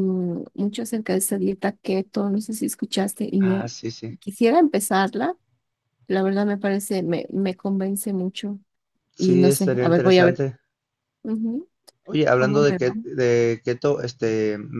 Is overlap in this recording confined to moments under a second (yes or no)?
no